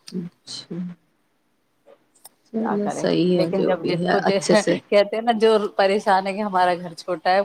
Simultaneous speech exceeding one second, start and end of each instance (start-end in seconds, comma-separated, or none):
2.6-4.8